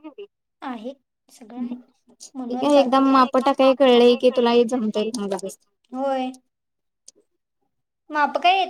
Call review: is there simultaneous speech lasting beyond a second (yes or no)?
yes